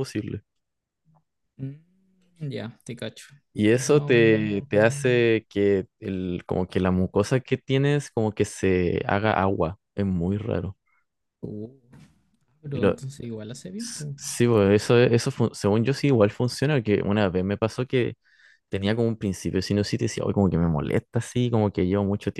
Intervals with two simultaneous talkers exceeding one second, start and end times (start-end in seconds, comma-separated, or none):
3.7-5.3